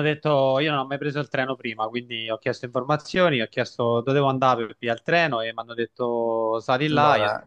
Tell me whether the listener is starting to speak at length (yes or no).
yes